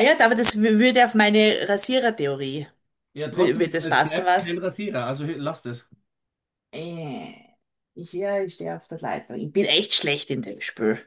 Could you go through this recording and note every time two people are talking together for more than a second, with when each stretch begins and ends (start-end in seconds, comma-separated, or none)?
3.3-4.6